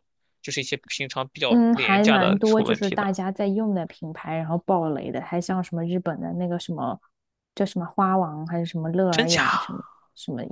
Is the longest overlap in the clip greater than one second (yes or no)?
yes